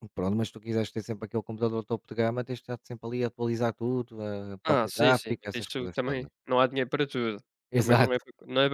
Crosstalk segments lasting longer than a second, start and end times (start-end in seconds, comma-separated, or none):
4.6-6.3